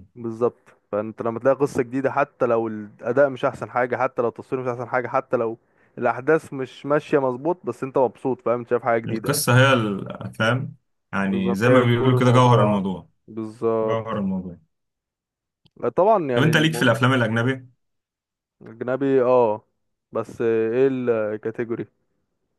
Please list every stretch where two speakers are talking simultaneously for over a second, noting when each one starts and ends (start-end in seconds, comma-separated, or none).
11.2-12.8